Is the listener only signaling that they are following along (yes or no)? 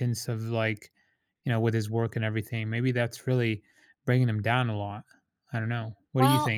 no